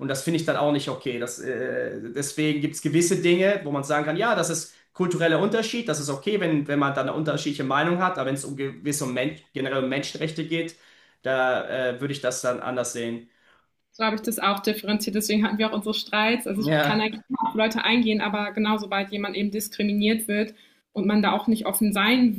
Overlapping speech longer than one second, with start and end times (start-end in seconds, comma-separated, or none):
none